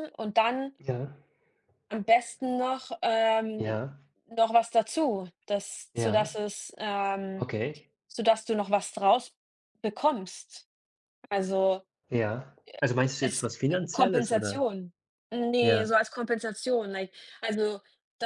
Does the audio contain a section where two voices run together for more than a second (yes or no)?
yes